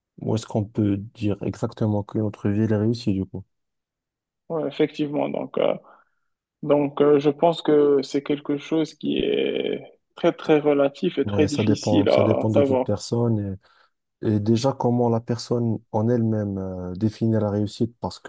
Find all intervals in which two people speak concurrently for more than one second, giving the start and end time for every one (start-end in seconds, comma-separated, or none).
11.2-12.9